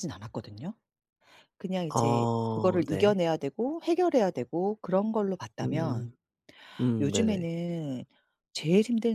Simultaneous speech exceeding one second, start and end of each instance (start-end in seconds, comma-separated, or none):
1.9-3.2